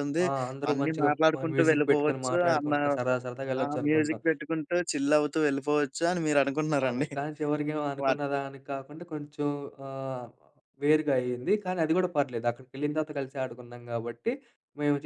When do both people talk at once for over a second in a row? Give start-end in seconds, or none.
0.7-2.7